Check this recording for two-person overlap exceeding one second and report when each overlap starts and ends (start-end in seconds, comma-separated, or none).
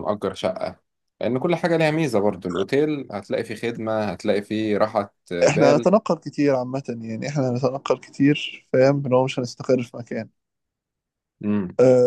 none